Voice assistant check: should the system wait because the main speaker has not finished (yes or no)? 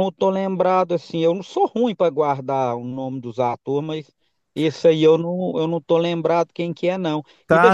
no